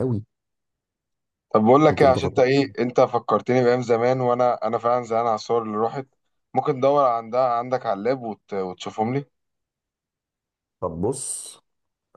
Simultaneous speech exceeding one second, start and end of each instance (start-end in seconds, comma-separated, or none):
none